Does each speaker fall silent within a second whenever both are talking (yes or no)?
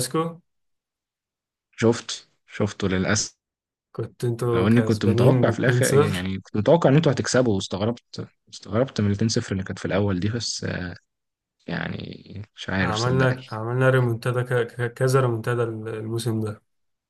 no